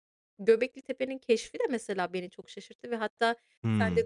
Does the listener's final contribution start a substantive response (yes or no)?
no